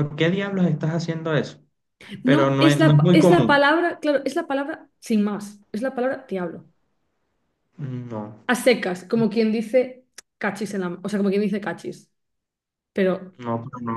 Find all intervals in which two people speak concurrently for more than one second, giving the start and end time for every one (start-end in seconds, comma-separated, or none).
2.2-3.6